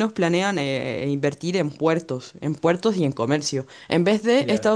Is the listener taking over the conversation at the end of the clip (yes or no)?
no